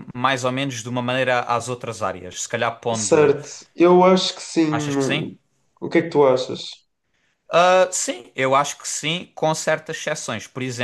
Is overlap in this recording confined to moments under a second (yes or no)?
yes